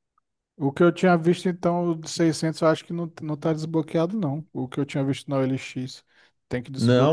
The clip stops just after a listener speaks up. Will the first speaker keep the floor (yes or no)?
no